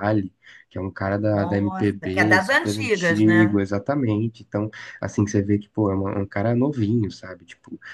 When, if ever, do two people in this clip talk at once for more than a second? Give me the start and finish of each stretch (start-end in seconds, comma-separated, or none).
1.3-3.6